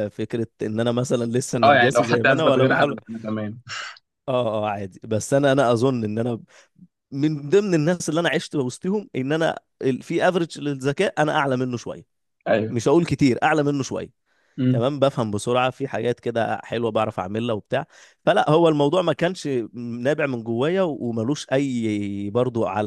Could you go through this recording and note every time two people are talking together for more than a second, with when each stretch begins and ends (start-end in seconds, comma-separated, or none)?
1.6-3.0